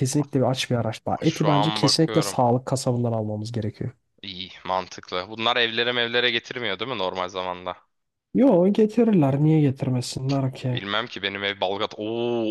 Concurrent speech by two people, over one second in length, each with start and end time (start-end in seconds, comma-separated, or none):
1.1-2.4